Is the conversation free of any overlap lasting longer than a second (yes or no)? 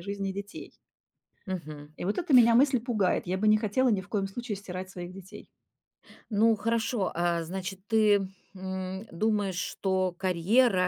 yes